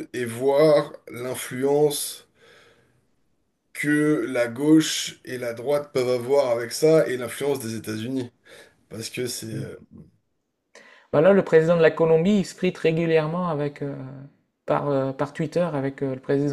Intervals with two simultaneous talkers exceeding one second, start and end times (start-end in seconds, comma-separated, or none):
none